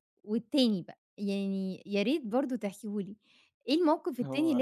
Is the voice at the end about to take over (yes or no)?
no